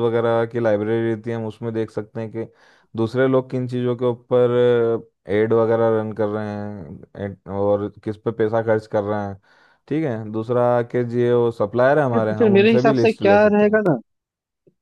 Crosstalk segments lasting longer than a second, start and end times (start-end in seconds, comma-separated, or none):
12.1-13.8